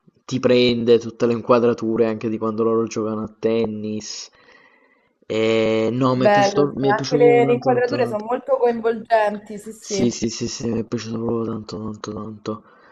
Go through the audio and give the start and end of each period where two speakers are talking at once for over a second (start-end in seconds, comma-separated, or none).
6.1-8.2